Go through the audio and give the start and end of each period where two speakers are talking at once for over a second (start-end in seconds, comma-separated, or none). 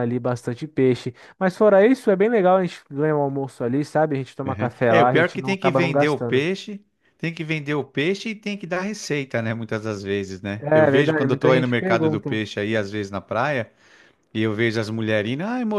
4.5-6.5, 10.6-12.4